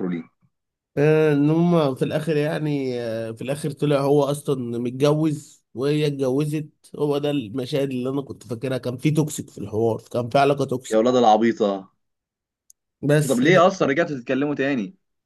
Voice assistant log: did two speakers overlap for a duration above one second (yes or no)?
no